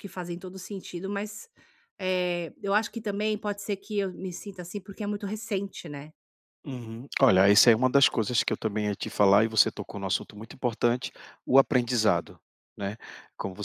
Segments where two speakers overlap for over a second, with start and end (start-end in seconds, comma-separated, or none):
none